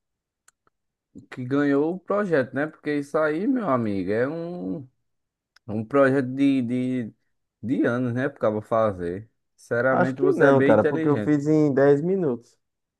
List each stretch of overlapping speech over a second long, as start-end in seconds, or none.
9.9-11.3